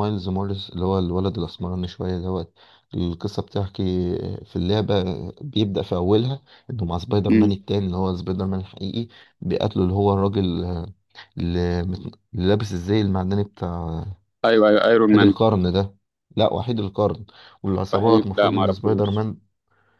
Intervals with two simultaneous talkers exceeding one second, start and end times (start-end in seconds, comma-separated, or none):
17.9-19.3